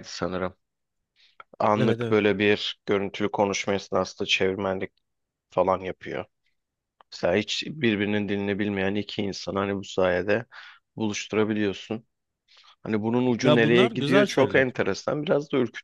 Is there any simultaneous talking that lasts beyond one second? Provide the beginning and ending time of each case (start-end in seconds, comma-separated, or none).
13.4-14.6